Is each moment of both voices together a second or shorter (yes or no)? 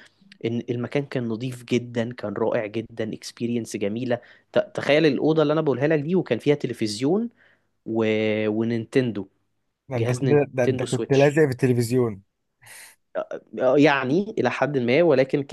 no